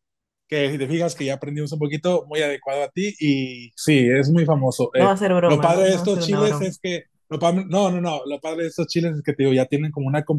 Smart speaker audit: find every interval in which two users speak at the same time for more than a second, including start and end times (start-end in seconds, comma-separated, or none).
5.0-6.7